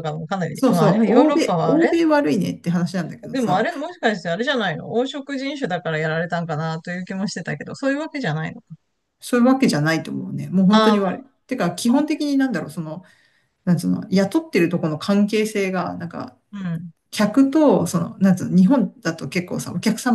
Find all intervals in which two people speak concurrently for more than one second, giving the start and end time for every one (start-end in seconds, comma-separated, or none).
0.5-1.9